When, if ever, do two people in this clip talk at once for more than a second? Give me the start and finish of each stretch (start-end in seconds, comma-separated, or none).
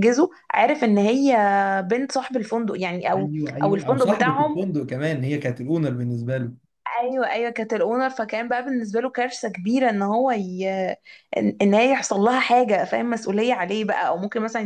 3.1-4.6